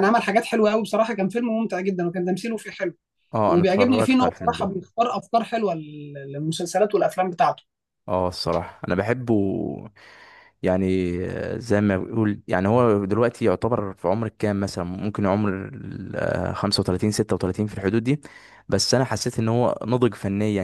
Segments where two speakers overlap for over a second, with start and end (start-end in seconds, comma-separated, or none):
3.5-4.7